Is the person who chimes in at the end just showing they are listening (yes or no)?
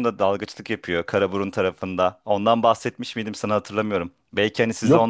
yes